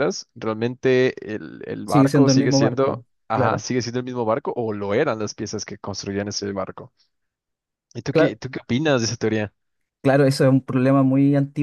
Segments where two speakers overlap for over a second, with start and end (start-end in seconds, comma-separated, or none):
1.8-3.7